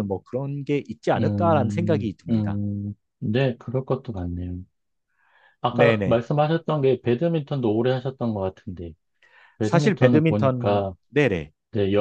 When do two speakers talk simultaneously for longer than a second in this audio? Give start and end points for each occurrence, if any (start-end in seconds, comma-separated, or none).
1.2-2.6, 9.6-10.9